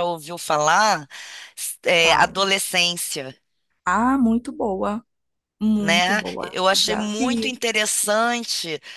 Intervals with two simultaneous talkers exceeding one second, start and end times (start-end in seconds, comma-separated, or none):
5.8-7.6